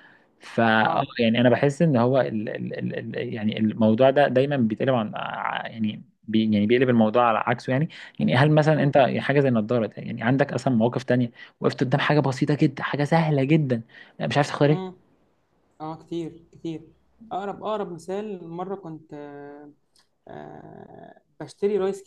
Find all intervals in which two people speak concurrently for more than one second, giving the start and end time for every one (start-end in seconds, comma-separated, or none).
none